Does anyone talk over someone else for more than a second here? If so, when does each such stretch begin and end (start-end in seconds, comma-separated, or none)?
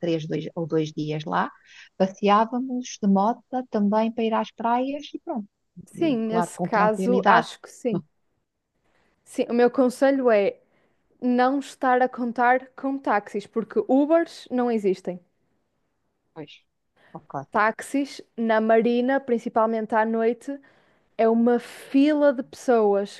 6.0-7.5